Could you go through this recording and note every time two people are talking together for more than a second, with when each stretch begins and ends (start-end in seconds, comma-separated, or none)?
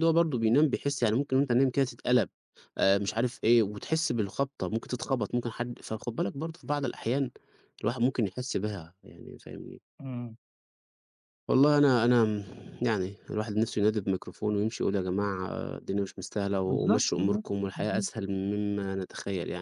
16.7-18.1